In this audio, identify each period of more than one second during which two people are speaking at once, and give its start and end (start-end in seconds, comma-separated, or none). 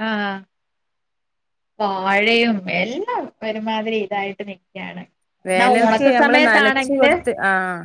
5.5-7.1